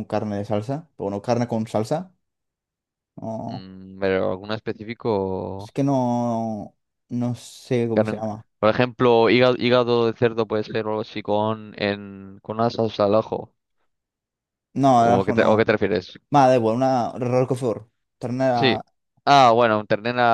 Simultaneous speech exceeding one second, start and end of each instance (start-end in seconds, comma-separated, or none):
none